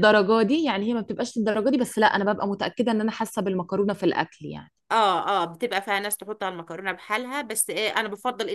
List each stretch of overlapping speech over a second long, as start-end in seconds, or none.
none